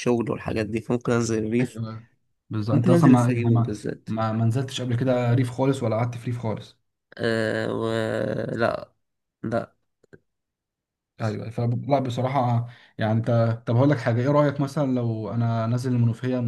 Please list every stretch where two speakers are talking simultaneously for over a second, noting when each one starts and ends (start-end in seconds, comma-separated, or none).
2.7-4.1